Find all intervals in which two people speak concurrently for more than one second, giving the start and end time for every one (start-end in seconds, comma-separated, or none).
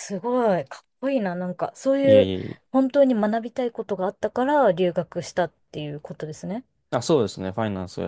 none